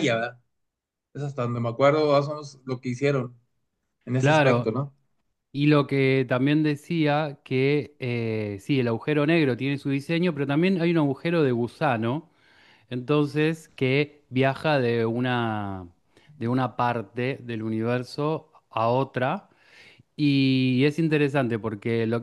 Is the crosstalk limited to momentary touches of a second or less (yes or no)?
yes